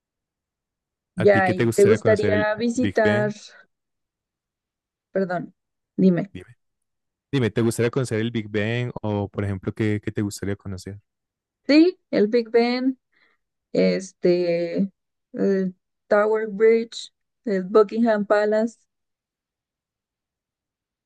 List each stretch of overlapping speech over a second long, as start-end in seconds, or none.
1.1-3.3